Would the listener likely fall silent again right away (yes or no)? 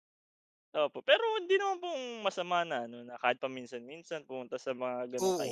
no